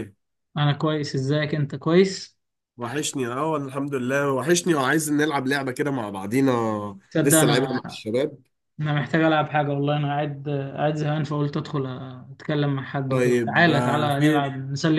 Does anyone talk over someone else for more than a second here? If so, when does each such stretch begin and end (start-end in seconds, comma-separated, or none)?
13.1-14.5